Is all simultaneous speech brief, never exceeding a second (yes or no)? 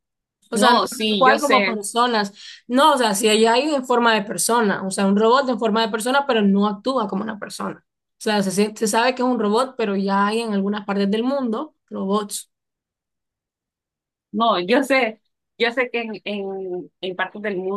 no